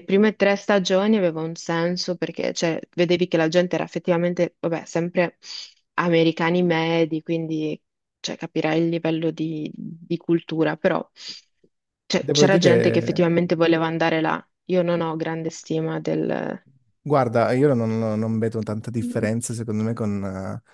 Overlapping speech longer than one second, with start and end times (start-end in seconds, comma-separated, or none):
12.2-13.4